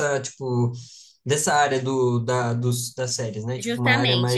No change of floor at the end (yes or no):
no